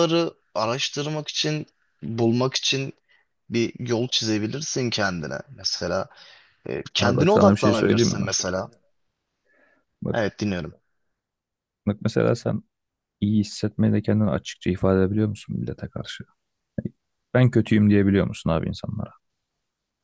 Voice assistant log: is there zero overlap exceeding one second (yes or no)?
no